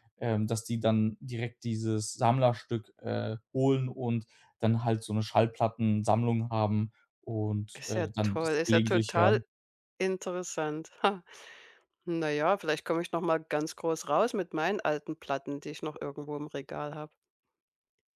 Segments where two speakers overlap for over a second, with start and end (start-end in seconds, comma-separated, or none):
7.7-9.4